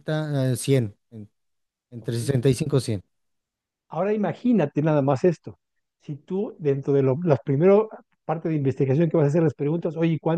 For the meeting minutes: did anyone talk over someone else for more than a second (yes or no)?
no